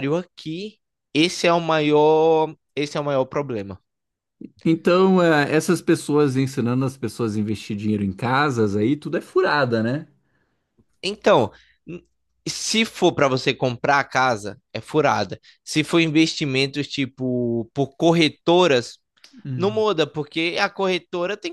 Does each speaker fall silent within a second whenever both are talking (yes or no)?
yes